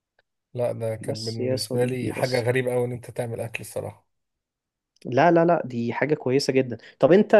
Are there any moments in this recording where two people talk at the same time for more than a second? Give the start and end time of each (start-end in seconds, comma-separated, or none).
1.0-2.4